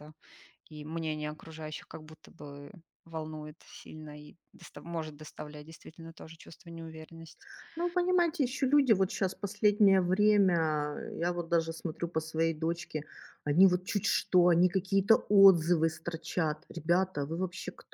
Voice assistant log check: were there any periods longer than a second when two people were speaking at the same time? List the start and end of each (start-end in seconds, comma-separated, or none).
none